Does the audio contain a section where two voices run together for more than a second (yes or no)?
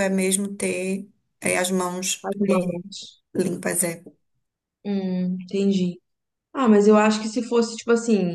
no